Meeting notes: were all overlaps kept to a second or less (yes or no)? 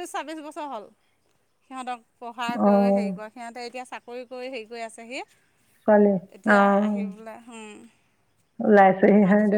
yes